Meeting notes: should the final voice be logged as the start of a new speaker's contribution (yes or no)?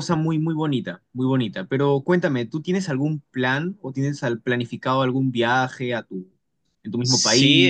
yes